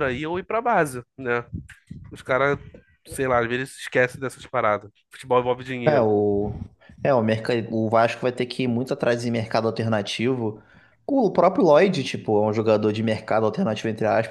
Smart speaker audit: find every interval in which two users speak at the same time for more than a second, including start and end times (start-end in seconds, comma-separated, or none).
none